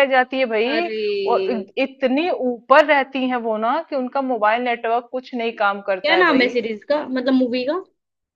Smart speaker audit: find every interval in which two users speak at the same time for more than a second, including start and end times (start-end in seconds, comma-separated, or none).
none